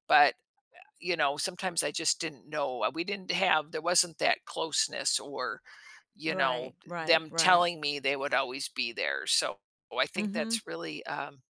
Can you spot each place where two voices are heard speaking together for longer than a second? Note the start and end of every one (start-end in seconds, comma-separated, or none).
6.3-7.7